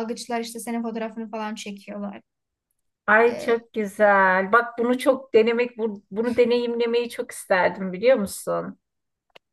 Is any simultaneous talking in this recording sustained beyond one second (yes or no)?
no